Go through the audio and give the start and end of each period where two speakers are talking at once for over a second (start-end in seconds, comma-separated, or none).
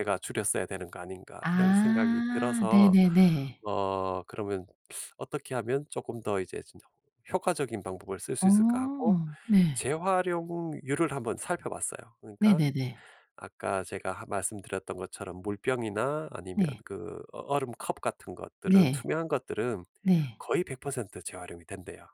1.4-3.0